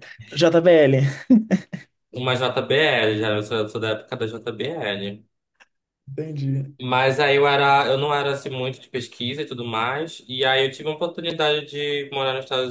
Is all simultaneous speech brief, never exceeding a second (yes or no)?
yes